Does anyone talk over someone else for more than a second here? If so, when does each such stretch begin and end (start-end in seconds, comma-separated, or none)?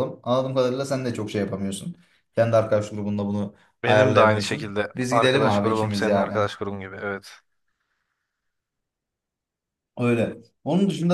3.8-6.5